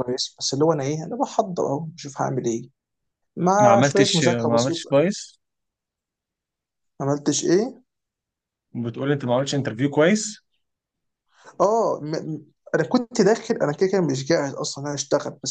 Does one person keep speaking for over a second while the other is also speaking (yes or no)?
yes